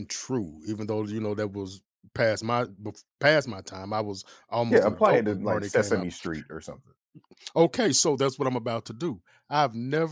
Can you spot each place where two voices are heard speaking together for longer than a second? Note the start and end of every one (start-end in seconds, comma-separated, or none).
4.7-6.1